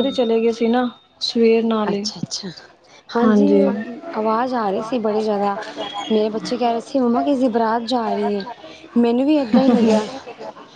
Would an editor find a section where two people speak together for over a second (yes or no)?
no